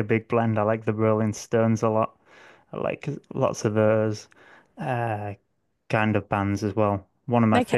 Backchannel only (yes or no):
yes